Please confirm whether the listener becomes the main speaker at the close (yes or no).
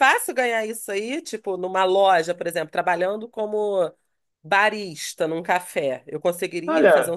yes